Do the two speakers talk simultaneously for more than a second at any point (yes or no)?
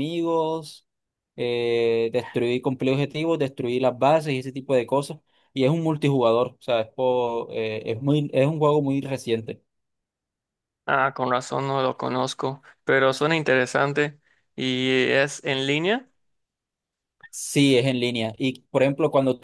no